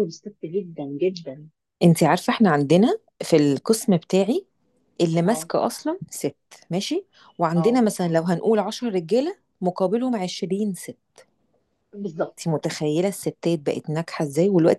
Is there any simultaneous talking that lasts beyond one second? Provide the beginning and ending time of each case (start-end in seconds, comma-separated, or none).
none